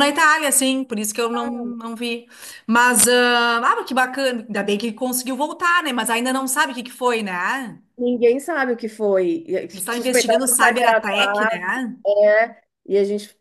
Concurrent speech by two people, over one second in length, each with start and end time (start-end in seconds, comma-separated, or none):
9.7-11.7